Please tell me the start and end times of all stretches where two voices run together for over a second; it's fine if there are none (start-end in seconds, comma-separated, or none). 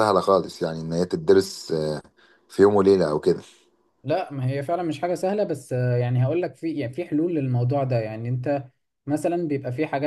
none